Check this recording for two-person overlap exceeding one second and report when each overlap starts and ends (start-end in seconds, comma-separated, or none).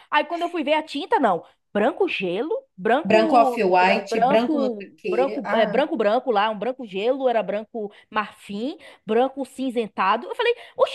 3.0-5.8